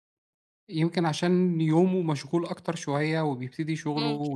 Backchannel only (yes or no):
yes